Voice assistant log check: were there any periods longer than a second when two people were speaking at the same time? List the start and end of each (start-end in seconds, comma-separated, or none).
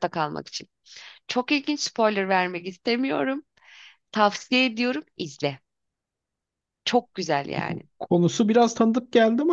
none